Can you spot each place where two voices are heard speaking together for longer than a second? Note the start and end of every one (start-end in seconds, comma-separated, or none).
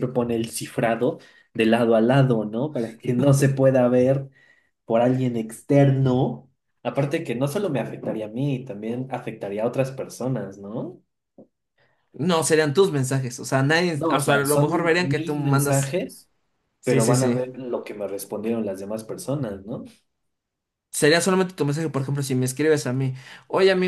13.9-16.0